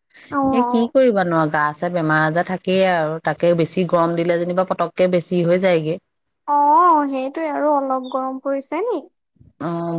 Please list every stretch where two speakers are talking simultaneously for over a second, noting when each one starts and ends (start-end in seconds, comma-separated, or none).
none